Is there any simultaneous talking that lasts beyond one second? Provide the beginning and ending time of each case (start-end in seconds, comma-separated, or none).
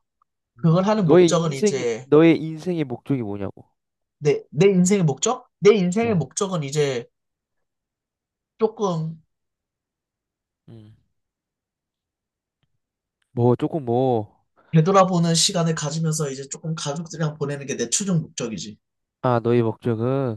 0.6-2.1